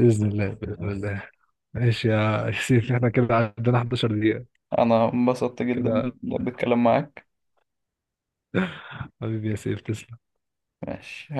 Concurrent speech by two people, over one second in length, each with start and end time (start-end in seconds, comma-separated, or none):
none